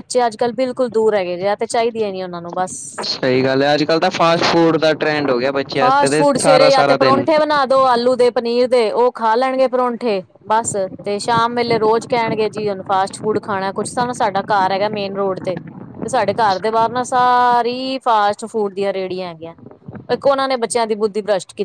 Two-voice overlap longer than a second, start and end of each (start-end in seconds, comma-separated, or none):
5.8-7.2